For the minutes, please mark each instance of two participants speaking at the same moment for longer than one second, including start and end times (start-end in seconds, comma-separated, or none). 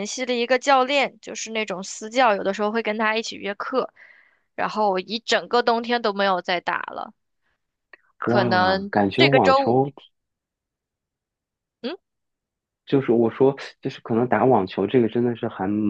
8.2-9.8